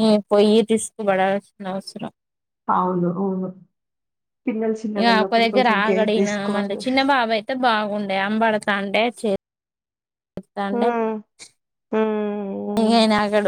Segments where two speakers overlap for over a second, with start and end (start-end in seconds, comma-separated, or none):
5.0-6.8